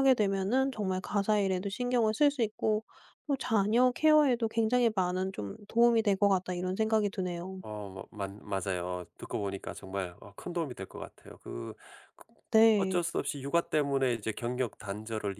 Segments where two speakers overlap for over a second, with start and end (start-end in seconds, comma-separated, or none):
none